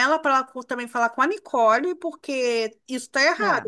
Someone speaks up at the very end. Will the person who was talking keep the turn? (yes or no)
yes